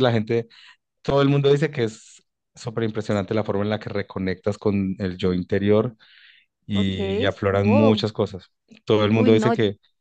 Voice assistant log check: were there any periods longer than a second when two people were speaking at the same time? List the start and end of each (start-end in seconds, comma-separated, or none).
6.8-8.0